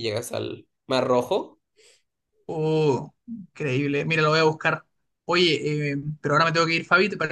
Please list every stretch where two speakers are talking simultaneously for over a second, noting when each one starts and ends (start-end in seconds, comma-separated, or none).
none